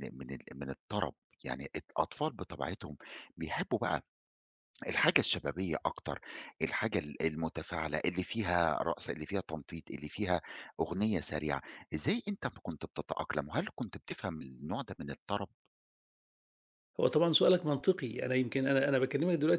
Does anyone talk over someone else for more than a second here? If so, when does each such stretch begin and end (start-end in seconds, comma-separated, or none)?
none